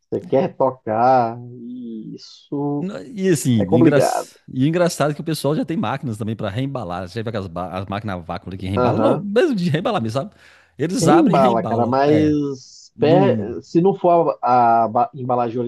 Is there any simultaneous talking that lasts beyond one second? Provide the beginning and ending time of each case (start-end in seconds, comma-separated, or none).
11.0-12.3